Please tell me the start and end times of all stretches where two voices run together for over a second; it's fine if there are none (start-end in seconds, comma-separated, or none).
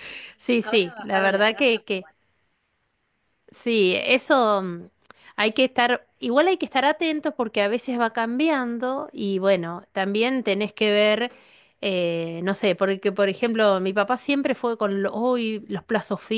0.6-2.1